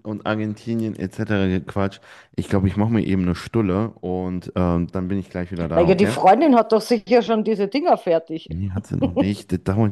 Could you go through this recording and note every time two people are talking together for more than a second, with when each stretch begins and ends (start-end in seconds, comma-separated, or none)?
none